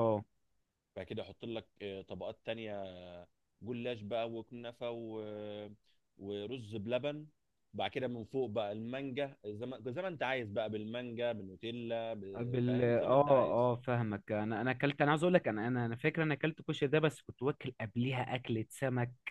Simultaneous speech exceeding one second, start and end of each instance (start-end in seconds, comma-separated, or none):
12.3-13.7